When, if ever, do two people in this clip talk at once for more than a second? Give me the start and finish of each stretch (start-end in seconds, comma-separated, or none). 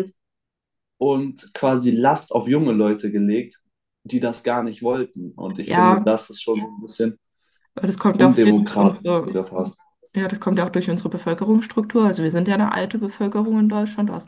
8.2-9.3